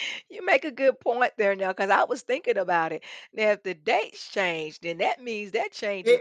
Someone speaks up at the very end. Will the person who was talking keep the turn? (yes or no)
no